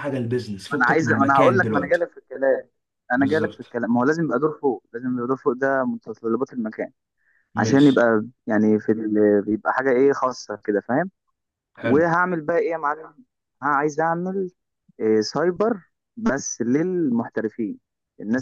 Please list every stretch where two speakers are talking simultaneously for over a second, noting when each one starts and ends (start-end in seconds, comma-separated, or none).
0.7-2.1